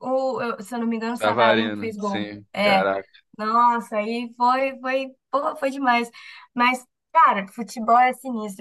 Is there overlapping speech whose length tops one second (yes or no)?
yes